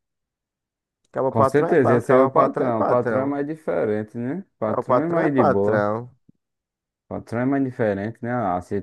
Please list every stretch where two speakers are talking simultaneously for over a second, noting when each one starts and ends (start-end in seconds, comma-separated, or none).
1.3-3.4, 4.6-5.9